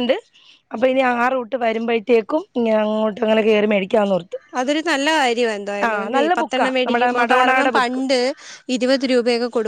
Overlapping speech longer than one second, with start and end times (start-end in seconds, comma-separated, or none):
6.4-8.0